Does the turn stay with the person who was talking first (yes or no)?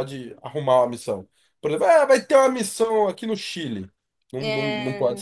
yes